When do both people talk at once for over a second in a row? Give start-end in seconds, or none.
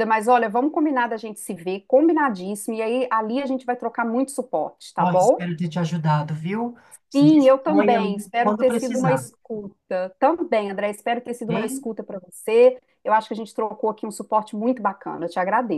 7.2-9.2